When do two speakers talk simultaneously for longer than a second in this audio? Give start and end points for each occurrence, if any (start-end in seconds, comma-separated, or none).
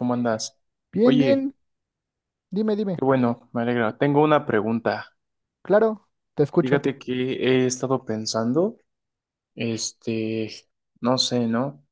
none